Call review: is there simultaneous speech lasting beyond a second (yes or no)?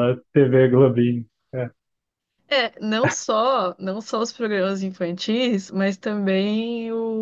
no